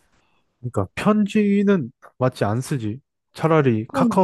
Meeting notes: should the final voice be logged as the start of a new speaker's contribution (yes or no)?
no